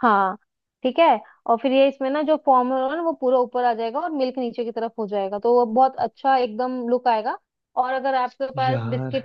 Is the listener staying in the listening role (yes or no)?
yes